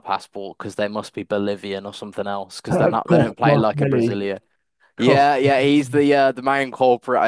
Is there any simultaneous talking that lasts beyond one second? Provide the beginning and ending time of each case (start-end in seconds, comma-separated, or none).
2.7-4.3